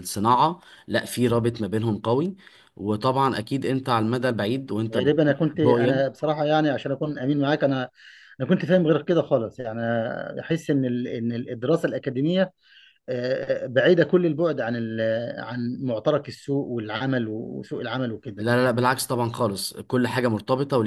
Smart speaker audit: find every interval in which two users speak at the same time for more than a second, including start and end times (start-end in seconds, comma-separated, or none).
5.0-6.2